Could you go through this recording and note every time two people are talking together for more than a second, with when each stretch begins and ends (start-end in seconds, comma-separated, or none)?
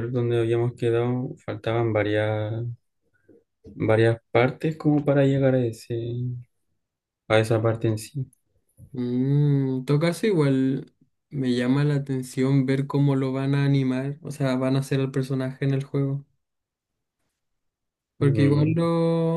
none